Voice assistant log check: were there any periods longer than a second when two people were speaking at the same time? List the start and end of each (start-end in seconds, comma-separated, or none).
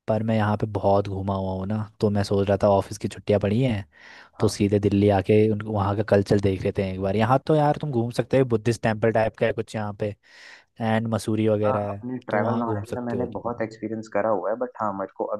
11.7-13.6